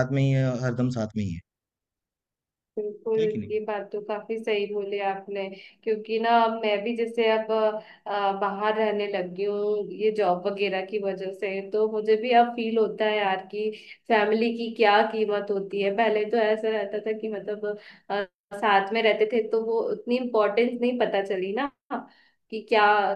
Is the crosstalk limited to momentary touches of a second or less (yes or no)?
yes